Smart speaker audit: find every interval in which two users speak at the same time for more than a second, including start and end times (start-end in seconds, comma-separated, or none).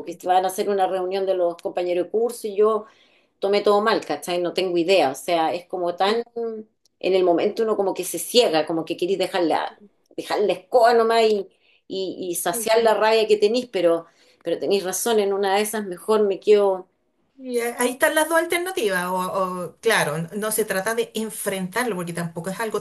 none